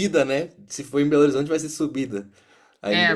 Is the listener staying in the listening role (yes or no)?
no